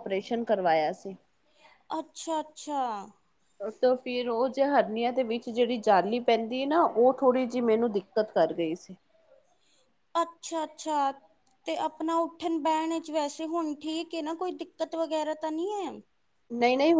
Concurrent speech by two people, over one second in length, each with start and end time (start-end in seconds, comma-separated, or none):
none